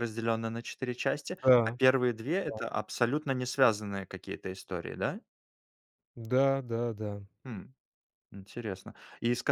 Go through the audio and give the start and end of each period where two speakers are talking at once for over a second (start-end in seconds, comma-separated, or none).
none